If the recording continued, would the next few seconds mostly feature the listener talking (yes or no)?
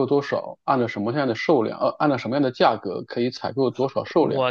yes